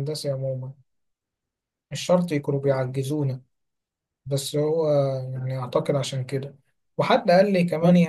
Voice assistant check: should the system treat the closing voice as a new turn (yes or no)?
no